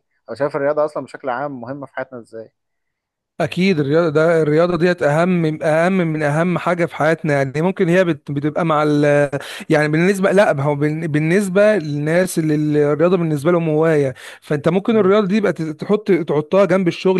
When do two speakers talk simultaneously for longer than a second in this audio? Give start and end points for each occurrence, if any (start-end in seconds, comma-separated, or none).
none